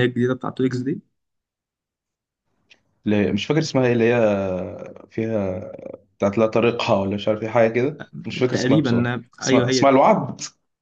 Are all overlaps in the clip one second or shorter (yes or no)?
no